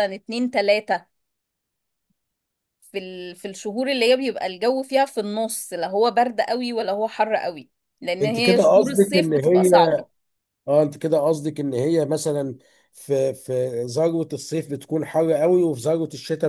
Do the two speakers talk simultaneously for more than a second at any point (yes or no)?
yes